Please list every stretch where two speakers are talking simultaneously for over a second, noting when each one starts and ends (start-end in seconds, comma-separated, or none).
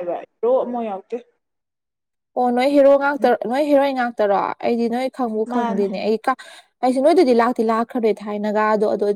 none